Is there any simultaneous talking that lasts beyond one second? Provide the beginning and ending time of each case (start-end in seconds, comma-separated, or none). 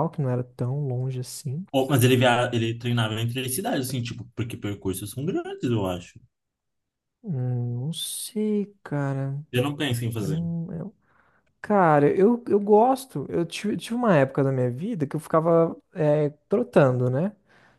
none